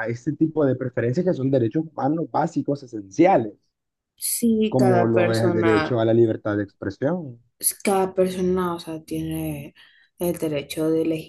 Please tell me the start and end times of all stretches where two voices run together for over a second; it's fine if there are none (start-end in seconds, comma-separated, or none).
4.7-6.0